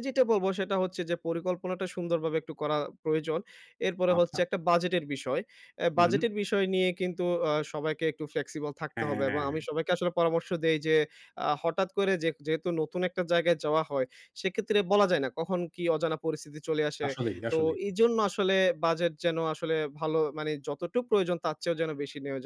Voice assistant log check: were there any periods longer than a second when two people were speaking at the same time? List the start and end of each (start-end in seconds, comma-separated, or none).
none